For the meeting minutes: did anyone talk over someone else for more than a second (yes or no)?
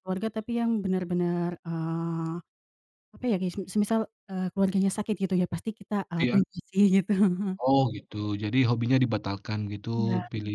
no